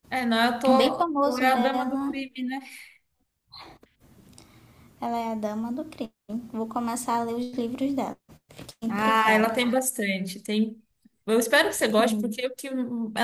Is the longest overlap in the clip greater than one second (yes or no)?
yes